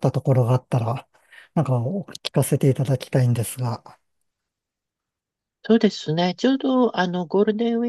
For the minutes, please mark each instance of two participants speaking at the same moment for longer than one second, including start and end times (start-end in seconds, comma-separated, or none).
none